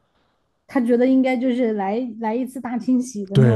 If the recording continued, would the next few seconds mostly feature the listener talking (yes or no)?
yes